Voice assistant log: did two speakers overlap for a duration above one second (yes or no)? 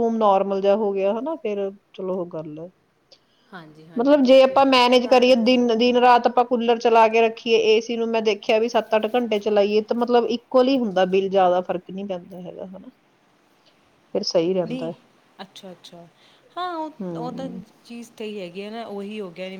yes